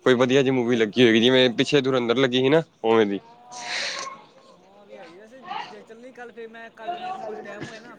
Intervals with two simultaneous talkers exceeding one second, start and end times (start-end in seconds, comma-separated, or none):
none